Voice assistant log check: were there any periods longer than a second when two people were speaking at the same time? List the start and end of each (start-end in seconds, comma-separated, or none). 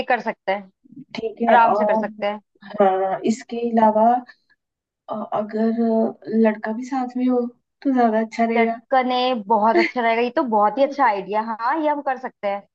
none